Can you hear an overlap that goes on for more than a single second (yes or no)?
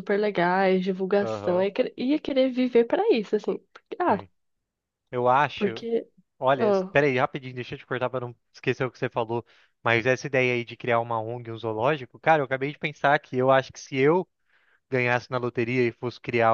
no